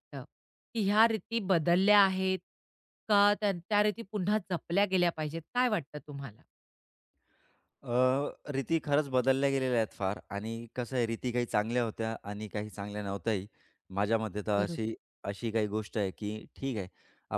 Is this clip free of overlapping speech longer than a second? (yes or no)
yes